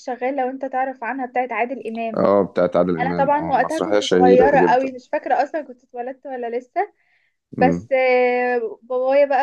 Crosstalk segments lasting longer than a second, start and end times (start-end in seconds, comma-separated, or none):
3.0-4.9